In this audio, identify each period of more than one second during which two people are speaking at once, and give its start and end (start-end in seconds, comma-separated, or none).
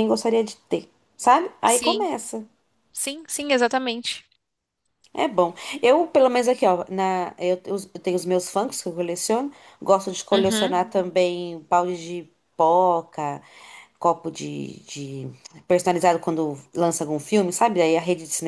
none